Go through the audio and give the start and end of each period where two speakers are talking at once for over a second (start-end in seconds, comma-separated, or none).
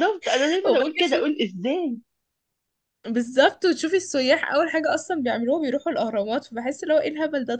none